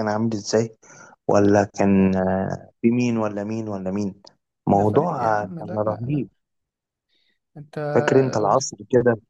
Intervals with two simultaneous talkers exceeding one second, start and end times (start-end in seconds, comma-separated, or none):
4.7-6.3